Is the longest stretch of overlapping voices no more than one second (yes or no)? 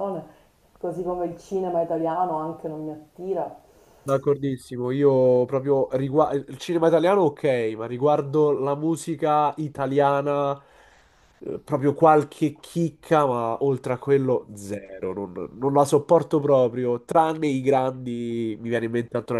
yes